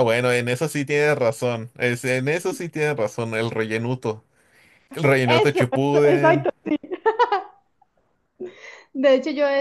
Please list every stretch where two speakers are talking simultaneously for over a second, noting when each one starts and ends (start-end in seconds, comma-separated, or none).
5.2-6.5